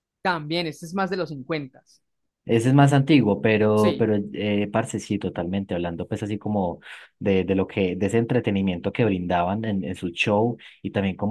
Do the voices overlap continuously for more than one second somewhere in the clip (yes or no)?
no